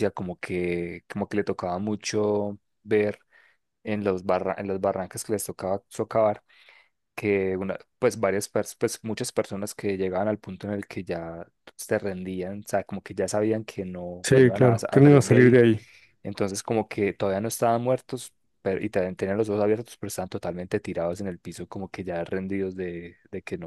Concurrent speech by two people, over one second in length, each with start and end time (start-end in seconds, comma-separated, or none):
14.2-15.7